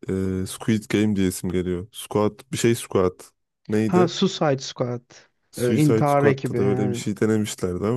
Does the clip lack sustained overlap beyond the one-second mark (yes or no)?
no